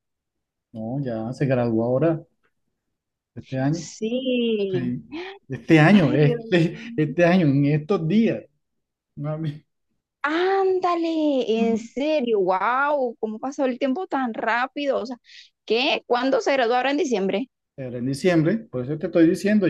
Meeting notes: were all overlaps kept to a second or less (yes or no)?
no